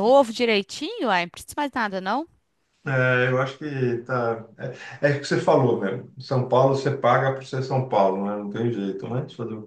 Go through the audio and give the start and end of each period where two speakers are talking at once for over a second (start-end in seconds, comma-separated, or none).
none